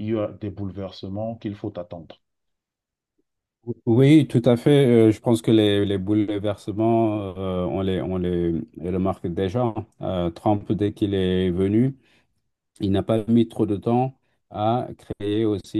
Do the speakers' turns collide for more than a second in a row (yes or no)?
no